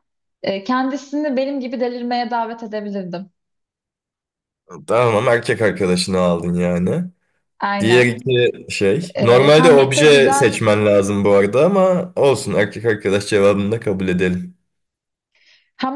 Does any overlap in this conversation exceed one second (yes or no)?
yes